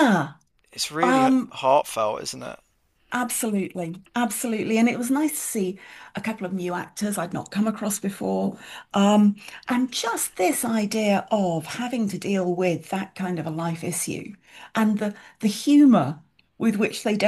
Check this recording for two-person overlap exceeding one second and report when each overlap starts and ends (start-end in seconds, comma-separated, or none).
none